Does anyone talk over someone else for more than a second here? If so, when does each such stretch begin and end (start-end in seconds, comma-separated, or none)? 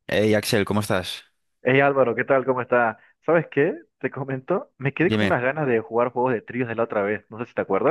none